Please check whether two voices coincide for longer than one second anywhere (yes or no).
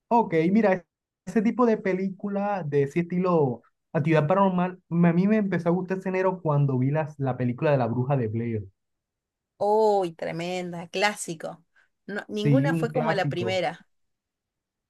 yes